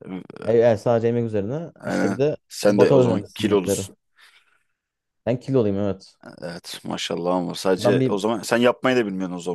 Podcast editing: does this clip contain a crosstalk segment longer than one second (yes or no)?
yes